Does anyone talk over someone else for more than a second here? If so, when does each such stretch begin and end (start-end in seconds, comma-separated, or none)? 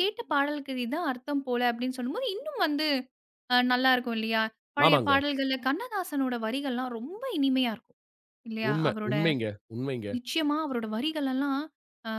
none